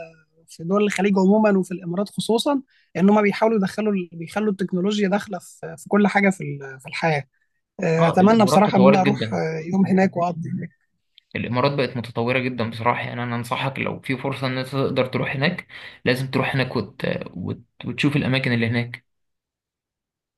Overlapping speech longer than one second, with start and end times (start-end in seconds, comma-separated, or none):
8.0-9.4